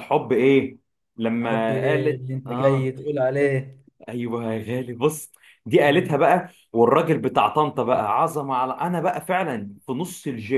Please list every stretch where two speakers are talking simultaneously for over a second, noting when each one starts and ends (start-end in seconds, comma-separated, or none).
1.4-2.9